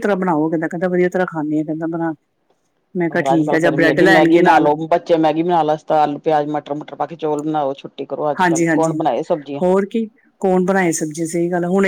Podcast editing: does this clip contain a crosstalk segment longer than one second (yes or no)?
yes